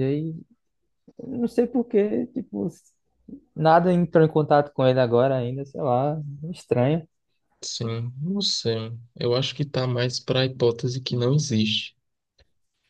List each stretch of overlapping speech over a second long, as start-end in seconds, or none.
none